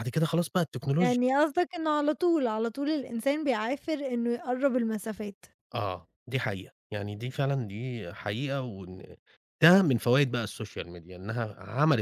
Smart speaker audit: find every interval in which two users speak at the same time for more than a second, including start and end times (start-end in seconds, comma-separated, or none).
none